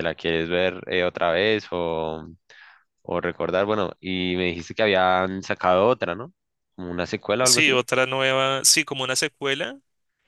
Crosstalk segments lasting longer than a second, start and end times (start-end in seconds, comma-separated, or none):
none